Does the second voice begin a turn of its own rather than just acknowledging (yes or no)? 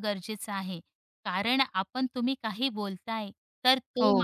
no